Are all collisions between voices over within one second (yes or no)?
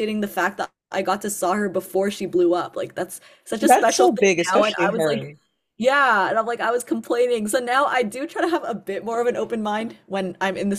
no